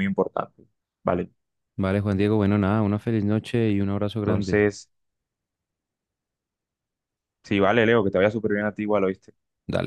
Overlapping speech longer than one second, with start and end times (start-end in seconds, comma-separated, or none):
none